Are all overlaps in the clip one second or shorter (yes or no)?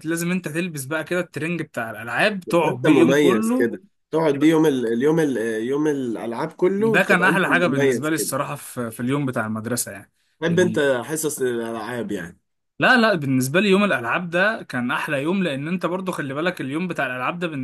no